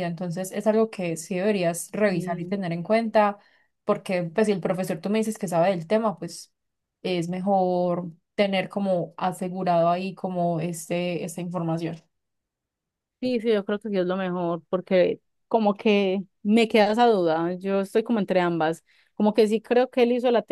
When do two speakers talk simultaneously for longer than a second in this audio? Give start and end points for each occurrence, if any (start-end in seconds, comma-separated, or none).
none